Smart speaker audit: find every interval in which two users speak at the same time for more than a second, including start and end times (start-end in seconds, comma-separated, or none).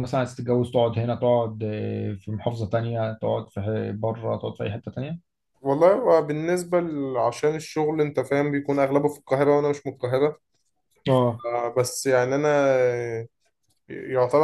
none